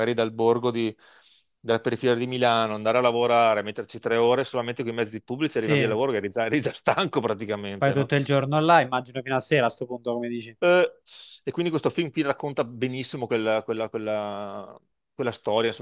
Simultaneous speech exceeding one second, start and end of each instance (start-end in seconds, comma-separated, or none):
none